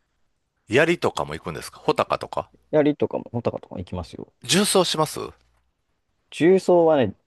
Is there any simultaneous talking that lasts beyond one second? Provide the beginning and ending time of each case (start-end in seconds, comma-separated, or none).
none